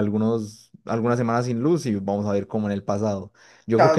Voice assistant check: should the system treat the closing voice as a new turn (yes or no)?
yes